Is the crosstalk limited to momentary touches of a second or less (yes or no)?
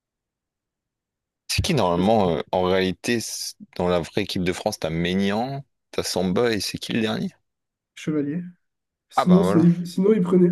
yes